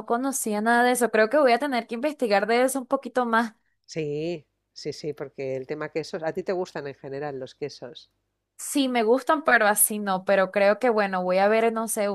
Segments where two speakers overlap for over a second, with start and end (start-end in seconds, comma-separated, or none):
none